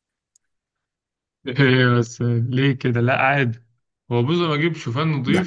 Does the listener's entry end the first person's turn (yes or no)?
no